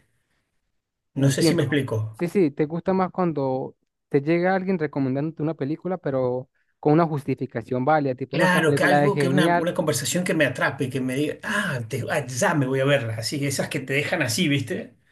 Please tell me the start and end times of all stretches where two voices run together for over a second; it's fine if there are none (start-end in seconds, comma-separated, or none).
8.3-9.7